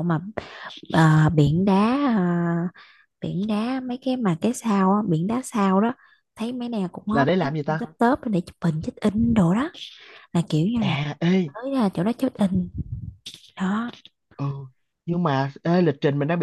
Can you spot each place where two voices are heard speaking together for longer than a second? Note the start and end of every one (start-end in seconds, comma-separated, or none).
none